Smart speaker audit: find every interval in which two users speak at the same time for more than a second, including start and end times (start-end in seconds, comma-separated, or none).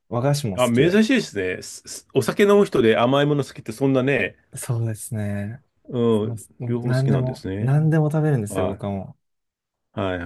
6.2-7.7